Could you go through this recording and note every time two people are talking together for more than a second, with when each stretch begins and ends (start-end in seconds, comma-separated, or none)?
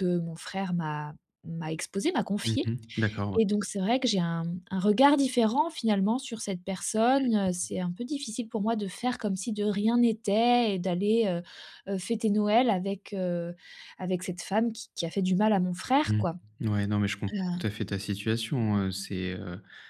none